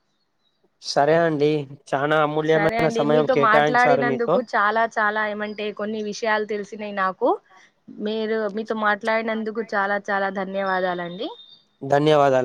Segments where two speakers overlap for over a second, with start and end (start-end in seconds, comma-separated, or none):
2.5-4.3